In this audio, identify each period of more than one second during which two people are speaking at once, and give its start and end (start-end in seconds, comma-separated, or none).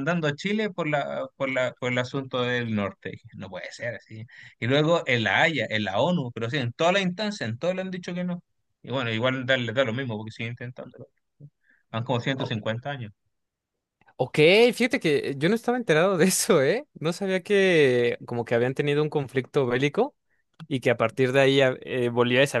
none